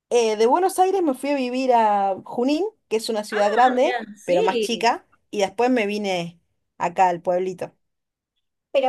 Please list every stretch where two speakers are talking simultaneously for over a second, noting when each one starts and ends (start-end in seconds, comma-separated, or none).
3.4-4.9